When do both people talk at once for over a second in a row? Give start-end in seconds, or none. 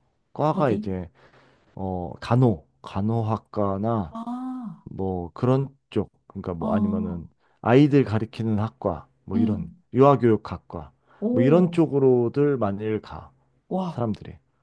none